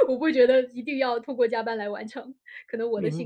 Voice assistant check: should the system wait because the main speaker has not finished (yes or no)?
no